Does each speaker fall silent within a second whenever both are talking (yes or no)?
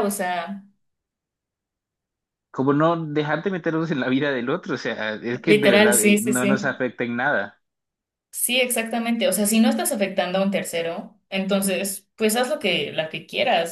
no